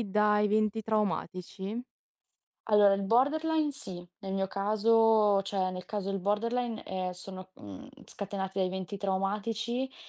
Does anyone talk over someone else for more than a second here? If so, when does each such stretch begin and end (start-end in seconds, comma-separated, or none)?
none